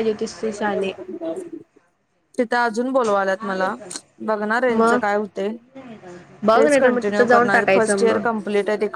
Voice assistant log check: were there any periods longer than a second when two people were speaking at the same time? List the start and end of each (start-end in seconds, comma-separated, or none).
6.5-8.2